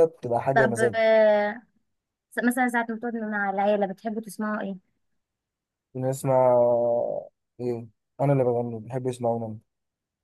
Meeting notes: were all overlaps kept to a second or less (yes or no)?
yes